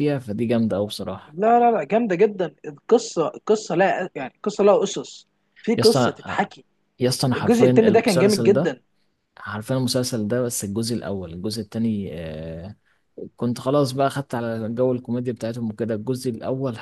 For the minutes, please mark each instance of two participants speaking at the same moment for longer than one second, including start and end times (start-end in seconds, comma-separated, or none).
7.3-8.7